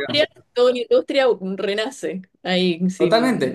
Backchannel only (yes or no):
no